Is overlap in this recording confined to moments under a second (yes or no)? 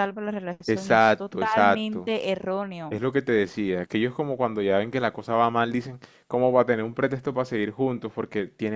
no